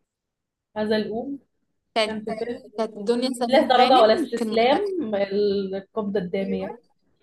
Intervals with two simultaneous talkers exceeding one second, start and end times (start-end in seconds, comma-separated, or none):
3.5-4.9